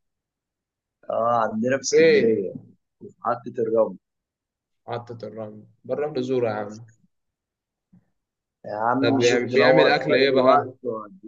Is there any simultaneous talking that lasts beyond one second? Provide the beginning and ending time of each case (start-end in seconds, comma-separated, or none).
9.0-10.7